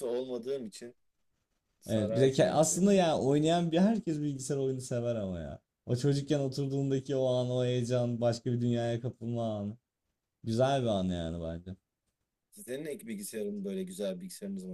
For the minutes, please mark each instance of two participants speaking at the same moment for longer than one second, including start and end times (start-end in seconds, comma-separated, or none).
1.9-3.3